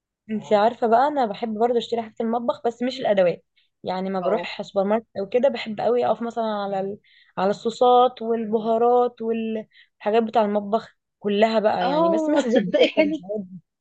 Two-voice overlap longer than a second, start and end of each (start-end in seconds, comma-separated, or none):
11.8-13.2